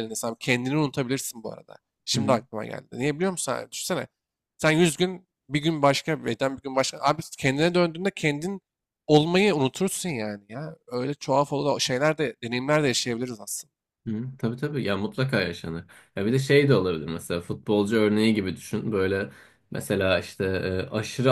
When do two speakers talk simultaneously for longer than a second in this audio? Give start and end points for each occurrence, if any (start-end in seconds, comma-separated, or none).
none